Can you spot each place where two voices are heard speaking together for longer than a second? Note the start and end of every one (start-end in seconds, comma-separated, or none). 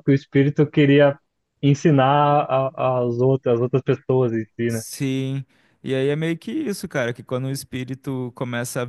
none